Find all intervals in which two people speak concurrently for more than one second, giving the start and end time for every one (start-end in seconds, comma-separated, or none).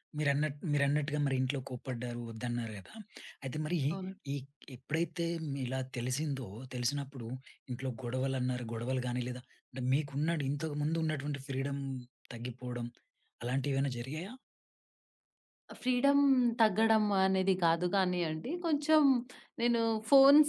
none